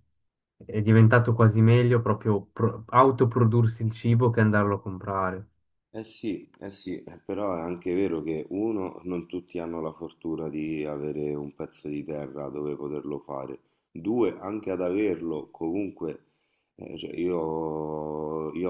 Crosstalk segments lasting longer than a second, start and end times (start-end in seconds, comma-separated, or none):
none